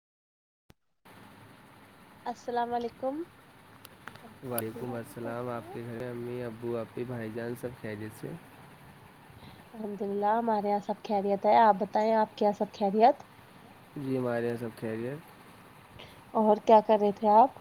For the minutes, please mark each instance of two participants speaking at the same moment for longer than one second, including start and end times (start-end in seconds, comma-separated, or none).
none